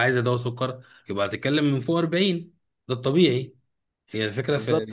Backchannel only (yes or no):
yes